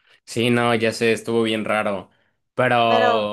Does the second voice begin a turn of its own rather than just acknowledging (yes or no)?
no